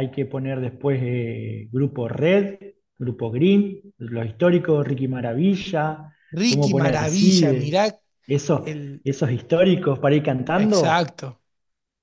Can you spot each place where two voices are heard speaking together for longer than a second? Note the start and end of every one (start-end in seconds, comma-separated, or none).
6.3-7.8